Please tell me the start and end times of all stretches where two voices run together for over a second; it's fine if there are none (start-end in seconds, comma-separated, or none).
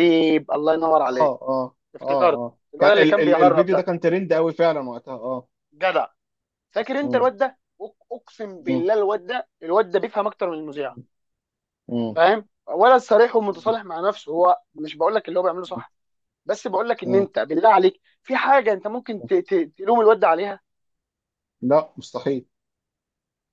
1.9-3.9